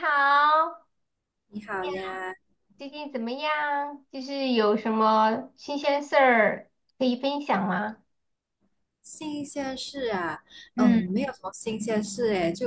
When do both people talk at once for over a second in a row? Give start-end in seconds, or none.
none